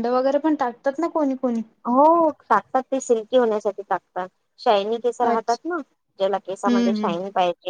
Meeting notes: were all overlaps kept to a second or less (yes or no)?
yes